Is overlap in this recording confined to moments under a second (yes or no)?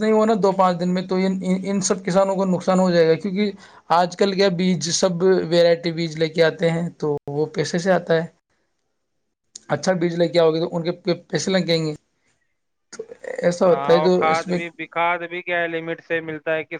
yes